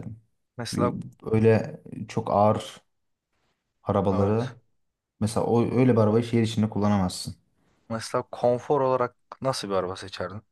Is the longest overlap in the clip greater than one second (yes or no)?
no